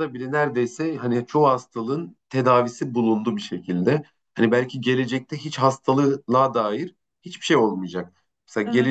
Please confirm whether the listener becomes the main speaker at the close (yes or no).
no